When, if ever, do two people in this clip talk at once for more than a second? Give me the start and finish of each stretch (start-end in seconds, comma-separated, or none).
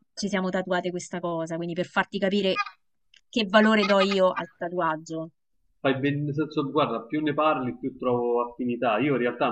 none